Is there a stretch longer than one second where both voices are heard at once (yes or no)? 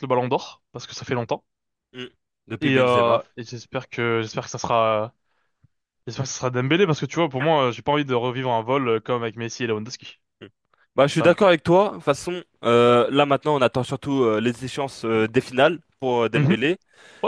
no